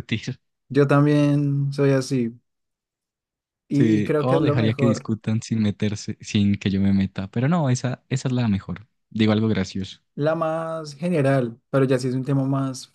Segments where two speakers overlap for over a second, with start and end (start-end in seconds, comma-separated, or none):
3.7-5.1